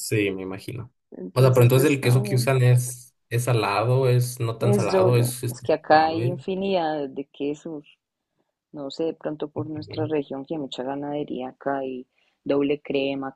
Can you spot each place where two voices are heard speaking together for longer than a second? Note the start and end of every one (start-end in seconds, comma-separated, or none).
1.3-2.5, 4.6-6.4